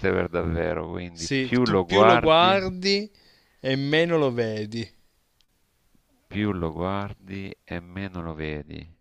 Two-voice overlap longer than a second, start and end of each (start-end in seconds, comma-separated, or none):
1.1-2.6